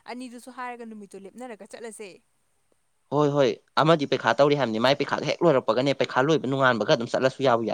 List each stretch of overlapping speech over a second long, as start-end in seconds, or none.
none